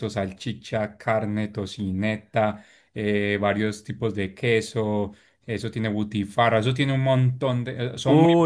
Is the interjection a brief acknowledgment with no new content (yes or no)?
no